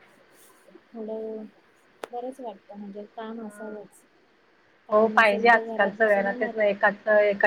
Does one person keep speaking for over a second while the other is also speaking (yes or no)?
yes